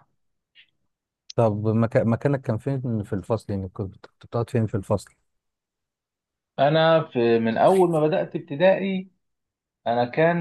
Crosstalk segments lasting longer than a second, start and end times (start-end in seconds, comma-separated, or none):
none